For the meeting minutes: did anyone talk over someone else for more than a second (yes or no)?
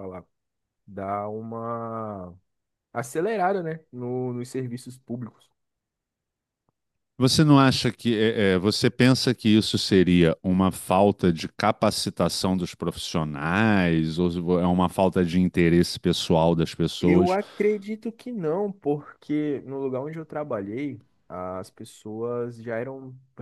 no